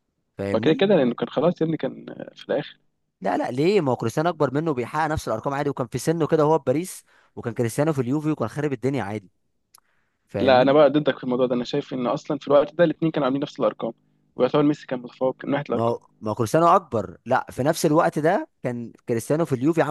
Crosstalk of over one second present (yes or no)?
no